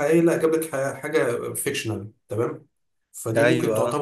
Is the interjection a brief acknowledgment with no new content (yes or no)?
yes